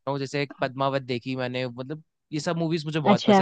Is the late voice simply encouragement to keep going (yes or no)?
yes